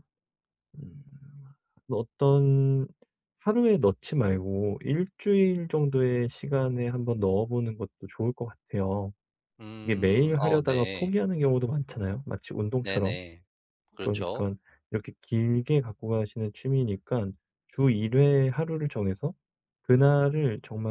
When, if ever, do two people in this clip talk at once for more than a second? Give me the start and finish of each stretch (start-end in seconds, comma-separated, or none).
9.8-11.1